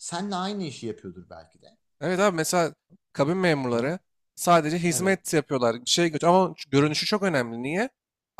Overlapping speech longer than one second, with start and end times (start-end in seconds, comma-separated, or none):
none